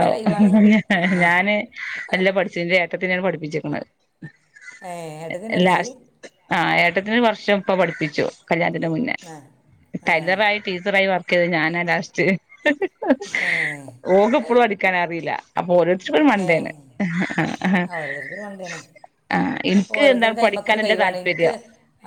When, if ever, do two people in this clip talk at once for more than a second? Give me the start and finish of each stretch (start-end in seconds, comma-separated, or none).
20.0-21.5